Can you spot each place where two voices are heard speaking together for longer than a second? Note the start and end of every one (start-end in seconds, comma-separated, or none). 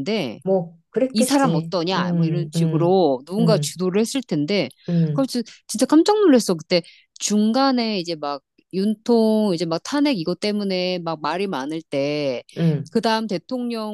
1.1-3.8